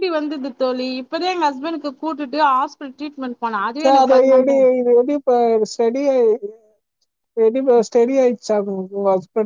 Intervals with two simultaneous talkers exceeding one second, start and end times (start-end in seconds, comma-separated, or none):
none